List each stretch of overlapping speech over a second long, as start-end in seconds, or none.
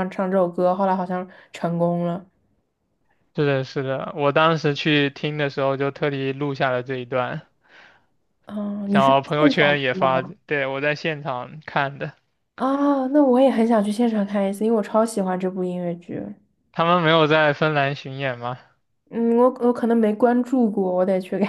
8.9-10.3